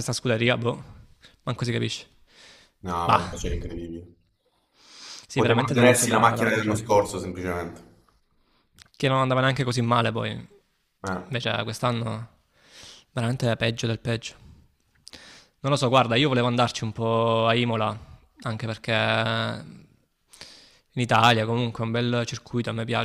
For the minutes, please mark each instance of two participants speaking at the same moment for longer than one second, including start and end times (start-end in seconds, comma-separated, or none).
5.3-6.9